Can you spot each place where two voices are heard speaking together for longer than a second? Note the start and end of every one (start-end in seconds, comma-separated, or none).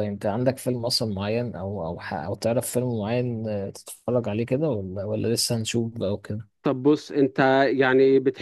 none